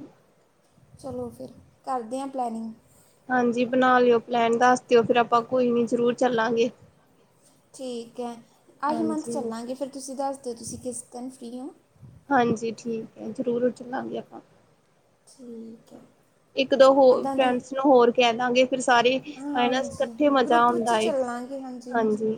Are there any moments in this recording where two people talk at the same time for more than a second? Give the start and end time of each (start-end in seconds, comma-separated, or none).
19.6-21.0